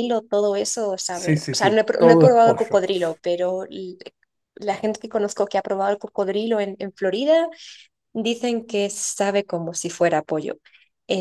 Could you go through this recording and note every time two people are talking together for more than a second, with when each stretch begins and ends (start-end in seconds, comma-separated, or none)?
1.1-2.8